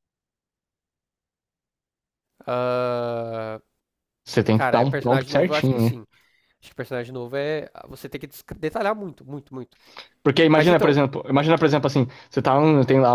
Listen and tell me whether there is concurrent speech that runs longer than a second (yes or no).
yes